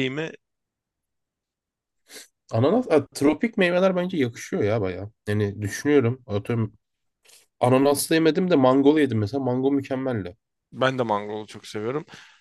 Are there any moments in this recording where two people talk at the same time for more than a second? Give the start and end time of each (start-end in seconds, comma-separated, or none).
none